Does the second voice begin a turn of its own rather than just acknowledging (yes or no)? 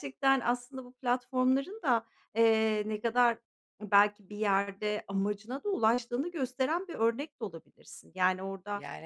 no